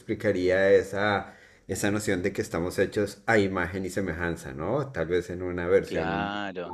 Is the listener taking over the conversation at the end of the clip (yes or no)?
yes